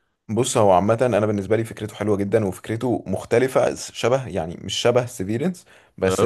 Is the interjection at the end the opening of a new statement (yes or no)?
no